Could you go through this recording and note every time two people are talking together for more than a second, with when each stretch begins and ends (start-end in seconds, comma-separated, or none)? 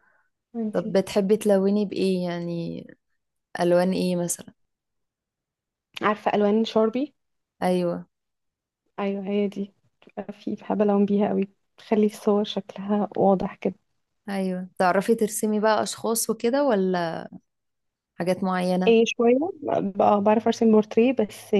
none